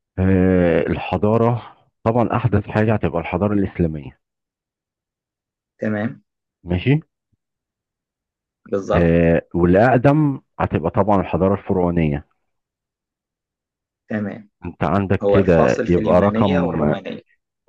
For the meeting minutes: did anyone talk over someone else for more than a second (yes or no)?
yes